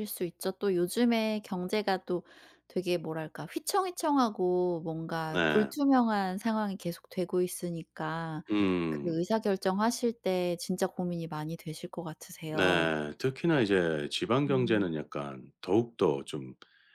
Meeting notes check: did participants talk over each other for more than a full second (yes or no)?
no